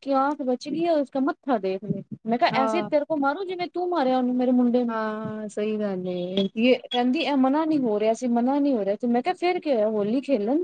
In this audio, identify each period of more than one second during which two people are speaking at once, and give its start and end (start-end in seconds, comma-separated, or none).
none